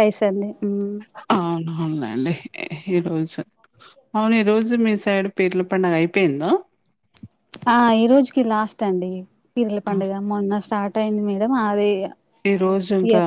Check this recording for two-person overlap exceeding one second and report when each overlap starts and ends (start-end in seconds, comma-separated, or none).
none